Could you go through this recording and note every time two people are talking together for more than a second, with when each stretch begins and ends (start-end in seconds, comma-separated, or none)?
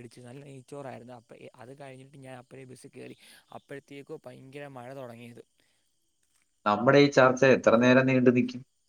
none